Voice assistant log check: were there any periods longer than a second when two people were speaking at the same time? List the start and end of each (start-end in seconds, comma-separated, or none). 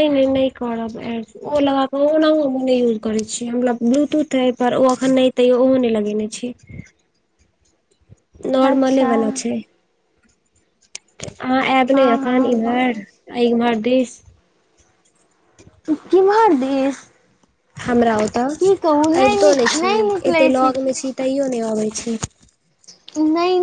11.9-13.3